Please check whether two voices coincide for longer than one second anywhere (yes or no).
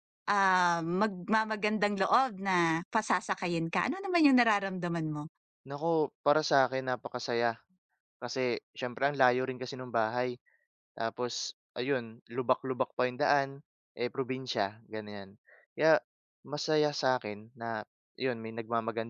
no